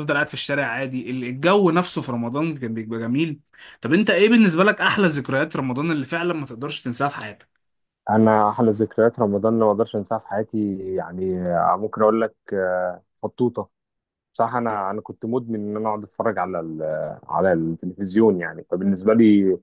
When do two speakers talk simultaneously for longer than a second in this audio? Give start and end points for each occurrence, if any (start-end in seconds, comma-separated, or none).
none